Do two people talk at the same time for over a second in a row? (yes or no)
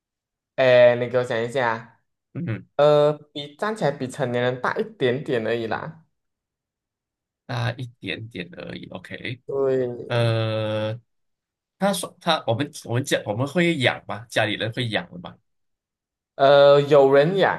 no